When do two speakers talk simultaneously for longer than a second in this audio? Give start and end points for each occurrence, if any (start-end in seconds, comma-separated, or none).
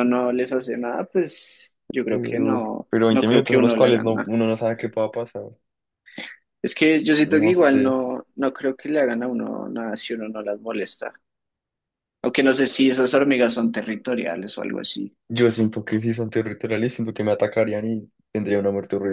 2.1-4.3